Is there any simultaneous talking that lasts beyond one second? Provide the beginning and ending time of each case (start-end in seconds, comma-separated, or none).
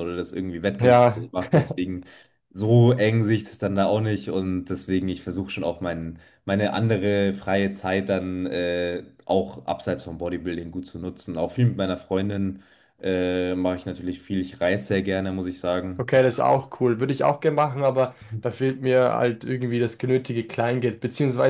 none